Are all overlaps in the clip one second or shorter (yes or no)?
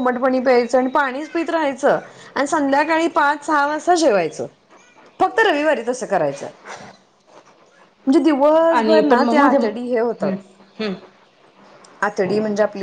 no